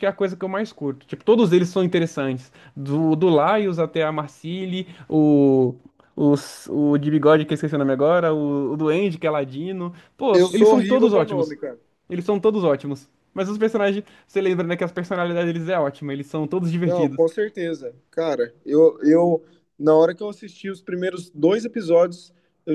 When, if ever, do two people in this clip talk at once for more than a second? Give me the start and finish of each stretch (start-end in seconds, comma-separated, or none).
10.3-11.6